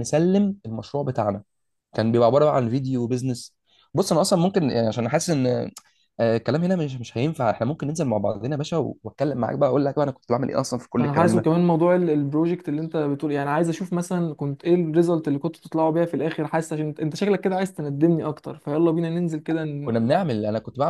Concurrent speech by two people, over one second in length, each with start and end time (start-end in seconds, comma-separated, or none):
none